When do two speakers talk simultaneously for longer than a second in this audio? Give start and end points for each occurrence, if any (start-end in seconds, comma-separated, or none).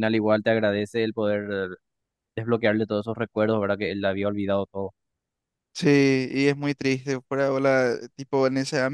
none